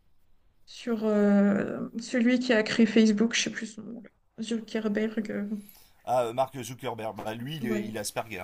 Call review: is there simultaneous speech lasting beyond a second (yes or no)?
no